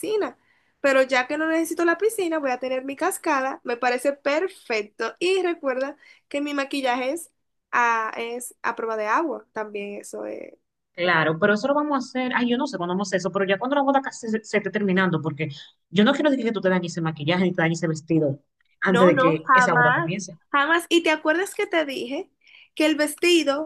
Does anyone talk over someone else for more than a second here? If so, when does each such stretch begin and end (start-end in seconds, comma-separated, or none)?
18.9-20.1